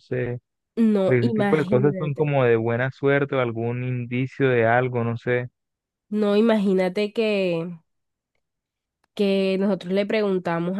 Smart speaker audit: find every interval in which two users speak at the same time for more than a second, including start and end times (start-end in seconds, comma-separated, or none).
1.1-2.3